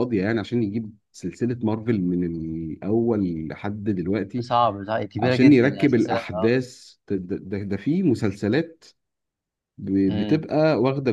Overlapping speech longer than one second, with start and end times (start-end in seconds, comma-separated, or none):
5.2-6.6